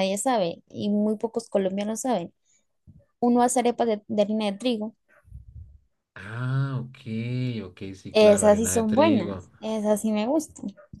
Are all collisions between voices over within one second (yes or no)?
no